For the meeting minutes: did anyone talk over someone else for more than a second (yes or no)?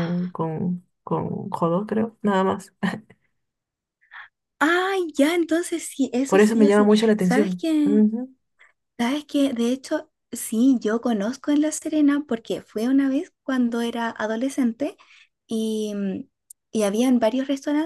yes